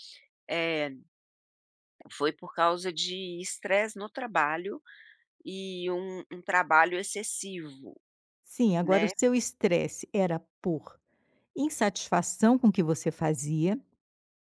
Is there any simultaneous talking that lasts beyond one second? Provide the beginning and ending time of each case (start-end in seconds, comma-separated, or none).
none